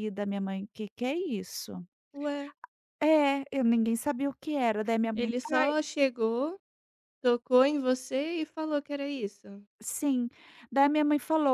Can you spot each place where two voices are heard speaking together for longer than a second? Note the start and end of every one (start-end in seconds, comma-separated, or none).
none